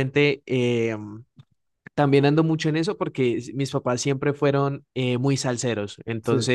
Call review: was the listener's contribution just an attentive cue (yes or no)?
yes